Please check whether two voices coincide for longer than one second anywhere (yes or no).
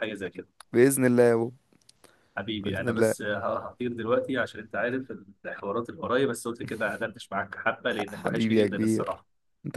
yes